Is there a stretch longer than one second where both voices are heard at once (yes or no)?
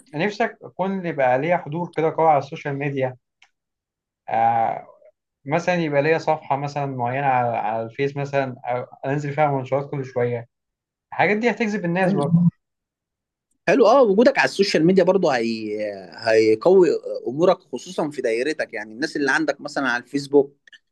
no